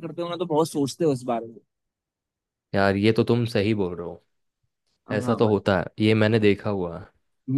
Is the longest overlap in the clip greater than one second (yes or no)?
no